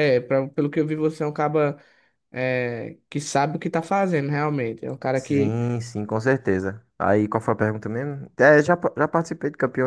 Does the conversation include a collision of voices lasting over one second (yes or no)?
no